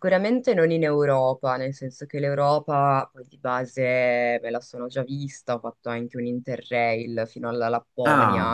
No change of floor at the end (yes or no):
yes